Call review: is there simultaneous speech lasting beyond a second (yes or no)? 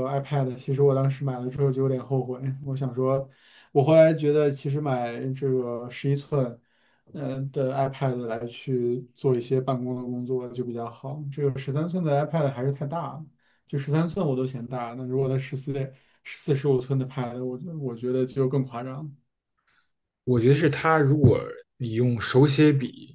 no